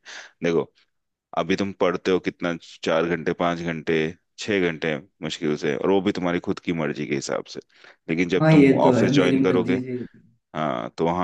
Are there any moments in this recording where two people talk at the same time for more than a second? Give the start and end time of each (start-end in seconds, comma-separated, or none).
8.4-9.8